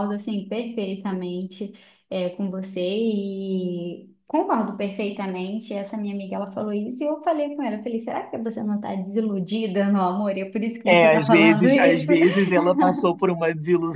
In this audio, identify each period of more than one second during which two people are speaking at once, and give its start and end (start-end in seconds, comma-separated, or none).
10.8-12.1